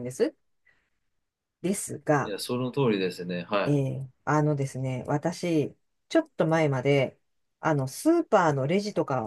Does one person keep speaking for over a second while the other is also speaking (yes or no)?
no